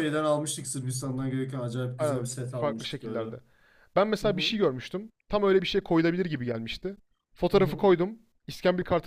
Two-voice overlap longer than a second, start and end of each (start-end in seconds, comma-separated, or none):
2.0-3.2